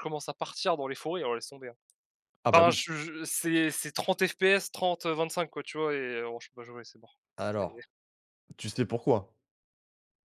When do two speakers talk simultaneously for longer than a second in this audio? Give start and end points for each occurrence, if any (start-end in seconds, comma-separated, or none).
none